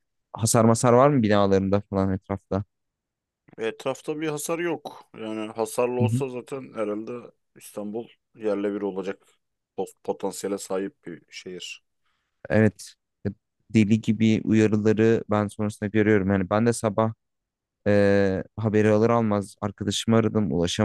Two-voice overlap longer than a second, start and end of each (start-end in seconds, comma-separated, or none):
none